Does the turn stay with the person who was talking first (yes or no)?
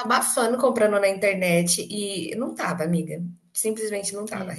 yes